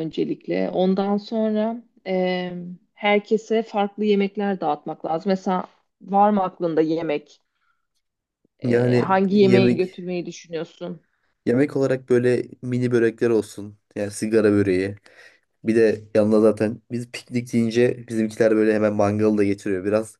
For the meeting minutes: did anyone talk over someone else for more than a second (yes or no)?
yes